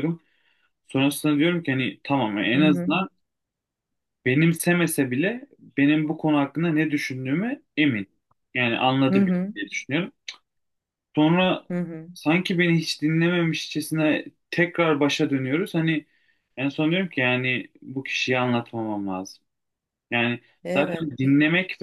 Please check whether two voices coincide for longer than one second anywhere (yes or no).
no